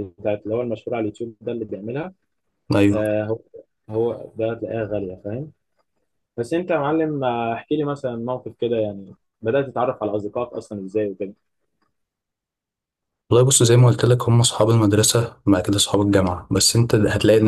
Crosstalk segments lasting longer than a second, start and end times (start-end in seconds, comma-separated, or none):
none